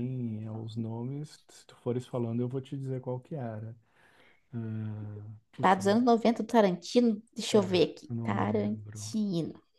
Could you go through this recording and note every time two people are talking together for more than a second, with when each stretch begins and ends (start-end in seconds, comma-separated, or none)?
7.5-9.2